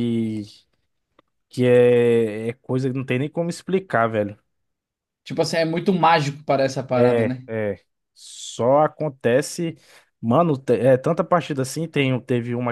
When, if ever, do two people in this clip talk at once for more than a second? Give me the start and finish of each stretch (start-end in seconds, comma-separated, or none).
none